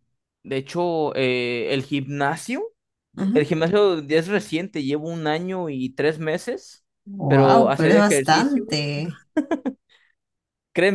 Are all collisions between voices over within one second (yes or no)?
no